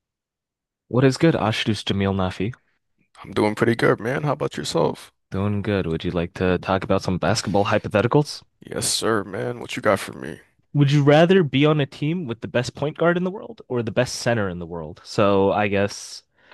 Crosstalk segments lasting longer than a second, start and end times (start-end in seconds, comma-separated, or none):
none